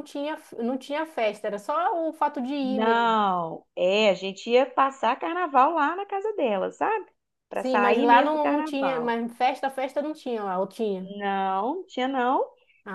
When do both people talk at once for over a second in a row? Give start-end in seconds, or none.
7.6-9.1